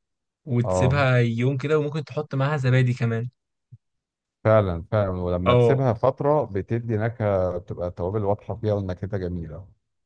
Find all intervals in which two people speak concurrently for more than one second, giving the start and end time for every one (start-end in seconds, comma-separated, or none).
none